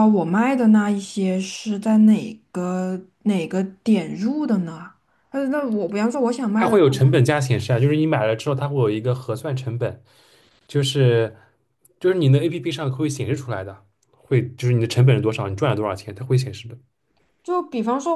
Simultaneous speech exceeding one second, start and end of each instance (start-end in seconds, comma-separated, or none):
none